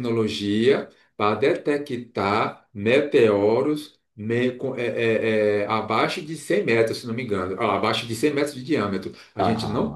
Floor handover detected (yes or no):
no